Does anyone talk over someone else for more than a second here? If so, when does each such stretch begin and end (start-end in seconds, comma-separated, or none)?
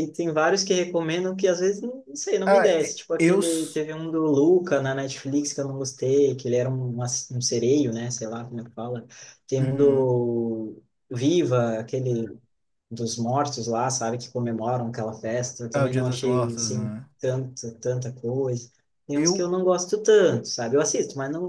2.5-3.8, 15.7-17.1